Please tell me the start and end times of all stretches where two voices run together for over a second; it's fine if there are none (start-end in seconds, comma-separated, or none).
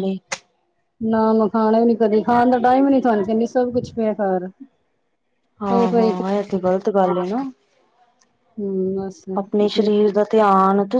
none